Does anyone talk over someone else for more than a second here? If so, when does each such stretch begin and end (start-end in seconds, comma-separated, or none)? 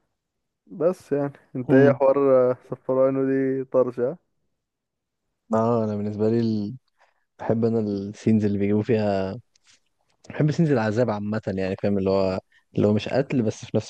none